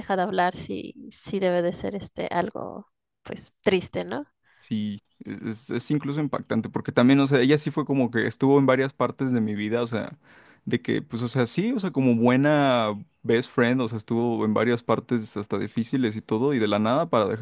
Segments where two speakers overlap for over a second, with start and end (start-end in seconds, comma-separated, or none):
none